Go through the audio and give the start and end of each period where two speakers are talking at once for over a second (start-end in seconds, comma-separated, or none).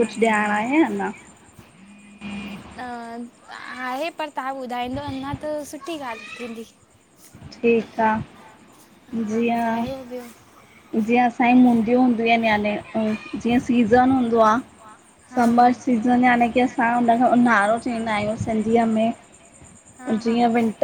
none